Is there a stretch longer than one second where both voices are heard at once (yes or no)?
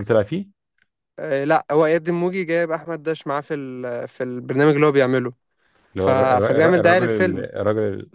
yes